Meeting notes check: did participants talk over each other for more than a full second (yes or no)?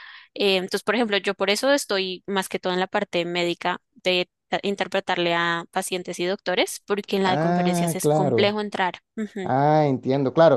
yes